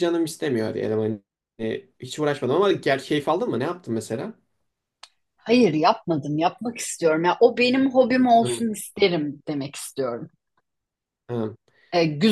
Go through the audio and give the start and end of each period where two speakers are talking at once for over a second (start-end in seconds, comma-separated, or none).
none